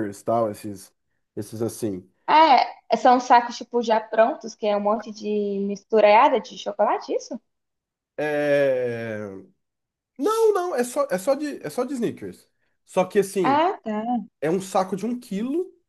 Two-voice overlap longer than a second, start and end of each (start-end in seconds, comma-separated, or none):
none